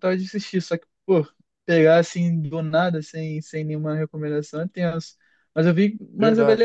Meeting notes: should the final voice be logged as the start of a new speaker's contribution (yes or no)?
no